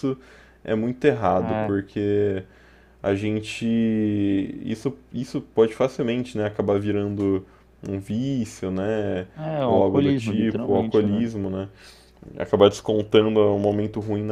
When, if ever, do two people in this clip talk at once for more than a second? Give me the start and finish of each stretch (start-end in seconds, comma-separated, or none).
9.7-11.2